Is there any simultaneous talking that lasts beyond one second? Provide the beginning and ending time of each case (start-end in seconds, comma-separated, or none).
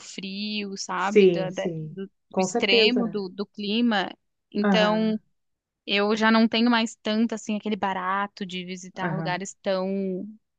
1.0-3.2